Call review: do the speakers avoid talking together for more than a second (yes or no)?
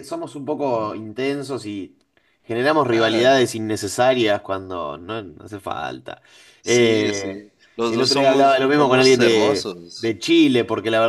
no